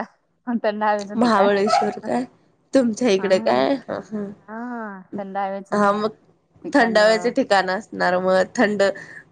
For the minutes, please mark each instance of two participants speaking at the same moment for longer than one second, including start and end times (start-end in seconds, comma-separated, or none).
none